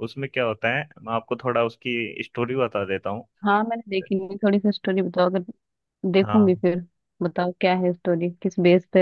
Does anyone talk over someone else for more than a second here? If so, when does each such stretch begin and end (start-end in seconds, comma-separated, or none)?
none